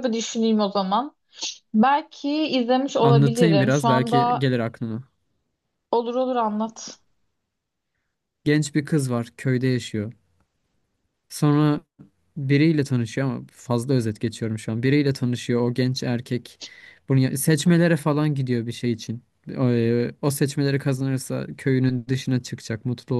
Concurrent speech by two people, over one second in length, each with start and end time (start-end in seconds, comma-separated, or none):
3.0-4.5